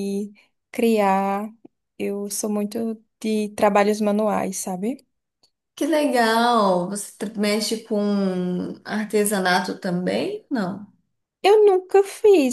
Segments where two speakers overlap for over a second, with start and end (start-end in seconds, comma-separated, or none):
none